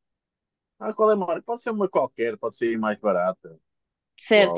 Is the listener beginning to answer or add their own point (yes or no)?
yes